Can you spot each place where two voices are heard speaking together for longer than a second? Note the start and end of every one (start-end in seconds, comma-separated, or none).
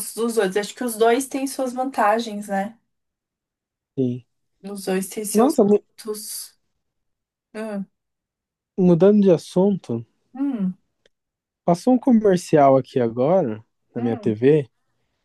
none